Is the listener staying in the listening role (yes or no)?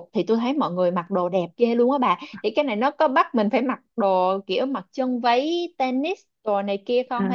no